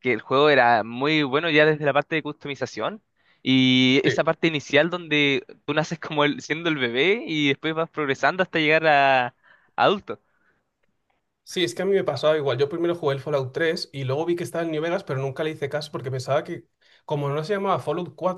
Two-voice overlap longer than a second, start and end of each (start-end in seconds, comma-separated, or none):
none